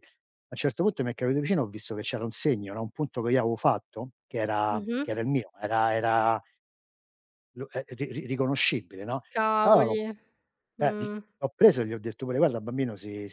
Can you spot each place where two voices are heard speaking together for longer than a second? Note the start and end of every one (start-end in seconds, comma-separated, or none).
none